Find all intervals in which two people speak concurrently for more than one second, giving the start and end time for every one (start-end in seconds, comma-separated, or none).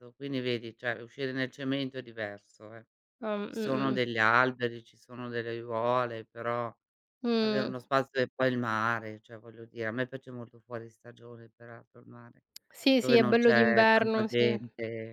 13.0-14.6